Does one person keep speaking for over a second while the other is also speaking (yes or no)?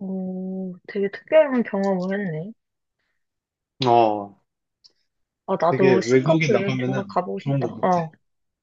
yes